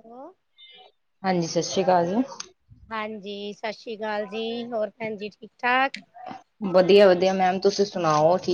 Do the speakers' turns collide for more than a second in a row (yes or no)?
no